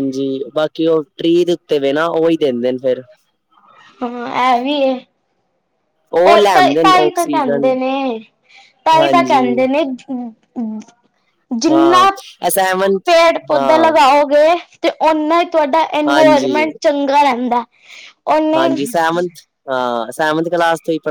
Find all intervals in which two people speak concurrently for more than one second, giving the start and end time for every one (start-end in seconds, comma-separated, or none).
6.4-7.7